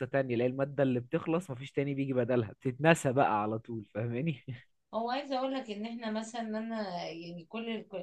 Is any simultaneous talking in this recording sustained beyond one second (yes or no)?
no